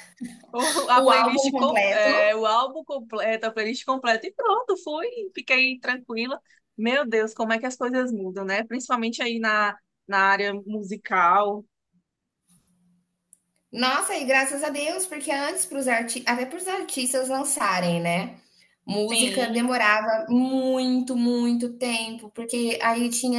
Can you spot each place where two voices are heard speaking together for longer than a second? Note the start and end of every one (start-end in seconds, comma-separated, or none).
0.9-2.3